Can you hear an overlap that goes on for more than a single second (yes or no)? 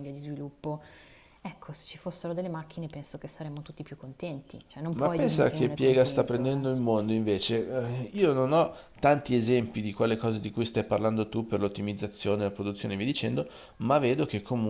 yes